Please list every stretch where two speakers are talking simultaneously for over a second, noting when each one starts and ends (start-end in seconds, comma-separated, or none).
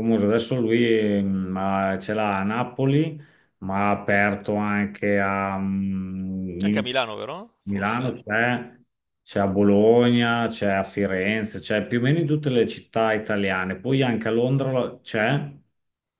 none